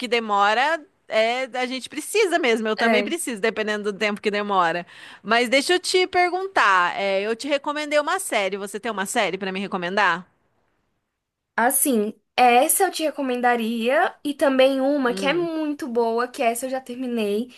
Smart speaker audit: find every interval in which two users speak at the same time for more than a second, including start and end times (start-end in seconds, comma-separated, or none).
none